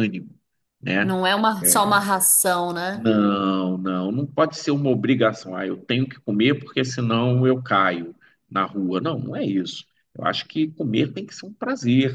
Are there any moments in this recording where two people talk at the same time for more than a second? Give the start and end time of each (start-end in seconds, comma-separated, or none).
none